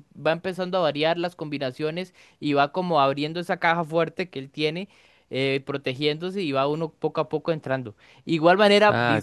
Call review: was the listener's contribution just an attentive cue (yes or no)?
yes